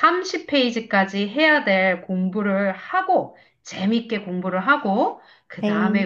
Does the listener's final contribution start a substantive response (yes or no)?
no